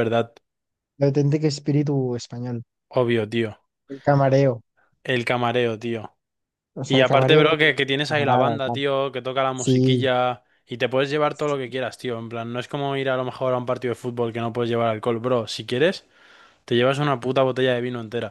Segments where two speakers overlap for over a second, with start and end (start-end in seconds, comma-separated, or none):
6.9-8.8